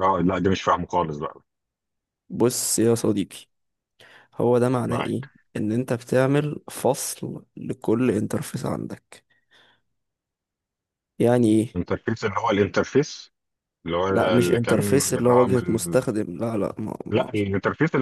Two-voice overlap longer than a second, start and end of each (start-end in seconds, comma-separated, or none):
14.1-16.0